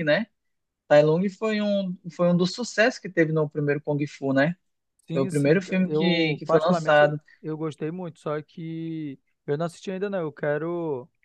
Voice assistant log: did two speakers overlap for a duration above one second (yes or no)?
yes